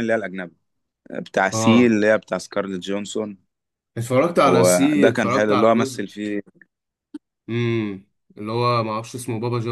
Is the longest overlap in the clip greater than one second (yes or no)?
yes